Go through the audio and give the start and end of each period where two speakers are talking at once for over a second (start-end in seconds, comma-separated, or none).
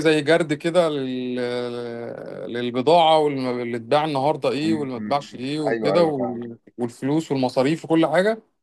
4.6-6.5